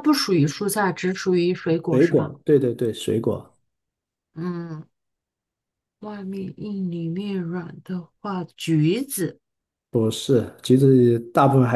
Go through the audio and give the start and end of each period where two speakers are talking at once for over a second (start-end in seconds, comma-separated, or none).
none